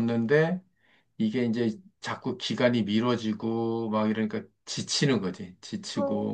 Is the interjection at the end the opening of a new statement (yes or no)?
yes